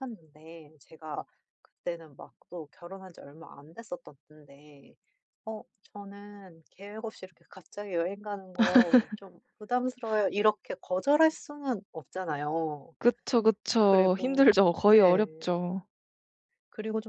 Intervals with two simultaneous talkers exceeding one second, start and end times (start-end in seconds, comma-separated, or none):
13.8-15.3